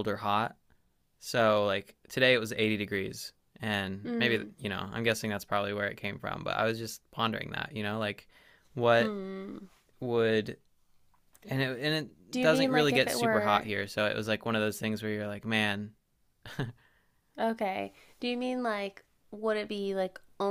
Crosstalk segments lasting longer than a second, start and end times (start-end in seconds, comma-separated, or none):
12.3-13.7